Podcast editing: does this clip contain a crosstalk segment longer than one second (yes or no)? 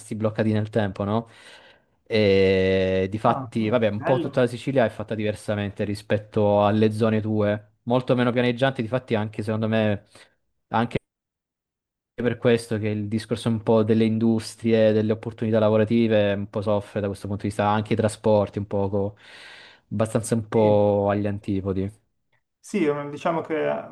yes